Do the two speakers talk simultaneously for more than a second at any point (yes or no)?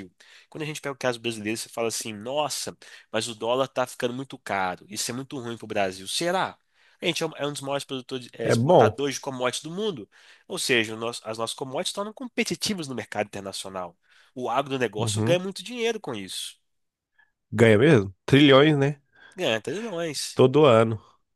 no